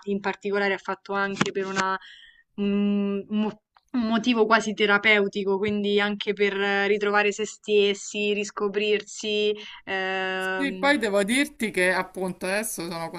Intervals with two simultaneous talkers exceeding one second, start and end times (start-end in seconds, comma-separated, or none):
none